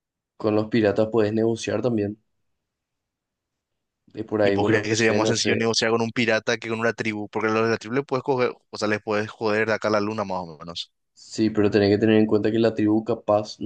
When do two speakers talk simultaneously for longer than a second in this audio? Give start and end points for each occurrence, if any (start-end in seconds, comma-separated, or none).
4.4-5.7